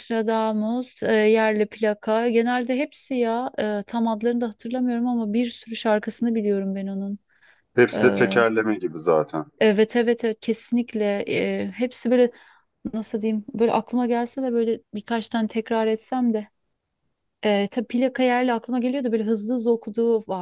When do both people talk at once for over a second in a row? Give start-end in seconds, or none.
none